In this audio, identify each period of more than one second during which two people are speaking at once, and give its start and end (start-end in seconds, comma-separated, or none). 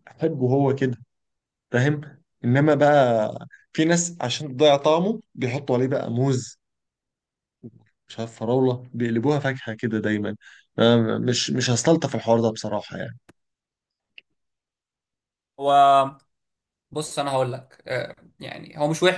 none